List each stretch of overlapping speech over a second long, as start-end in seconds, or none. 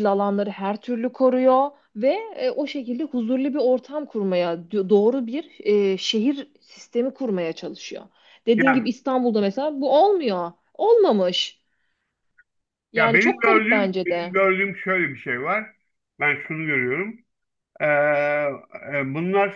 13.0-14.3